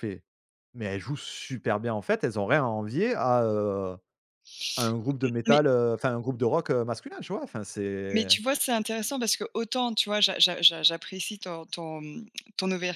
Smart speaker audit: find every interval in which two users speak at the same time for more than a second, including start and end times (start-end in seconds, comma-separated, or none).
none